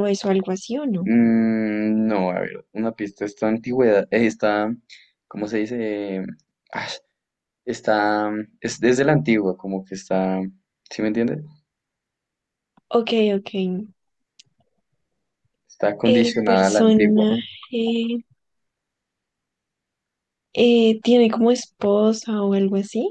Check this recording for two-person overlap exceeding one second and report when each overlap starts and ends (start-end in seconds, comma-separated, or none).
16.0-17.3